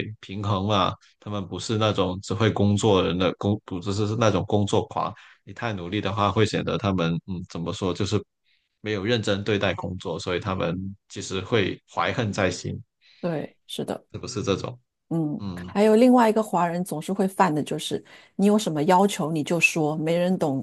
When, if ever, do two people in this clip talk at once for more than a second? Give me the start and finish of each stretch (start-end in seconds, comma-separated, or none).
none